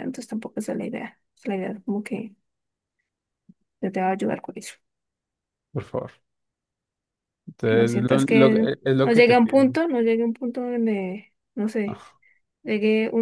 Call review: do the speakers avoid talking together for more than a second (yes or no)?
no